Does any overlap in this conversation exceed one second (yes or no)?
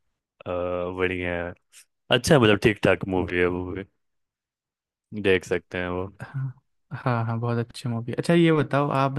no